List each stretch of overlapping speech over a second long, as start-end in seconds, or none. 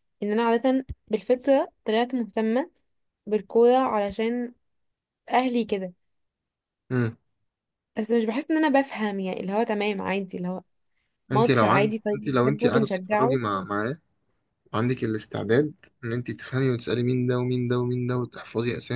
11.3-13.4